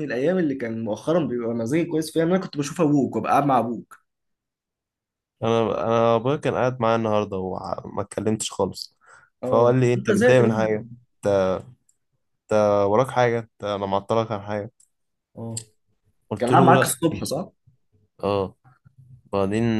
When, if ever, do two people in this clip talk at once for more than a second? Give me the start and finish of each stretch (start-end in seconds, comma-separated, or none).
9.4-10.8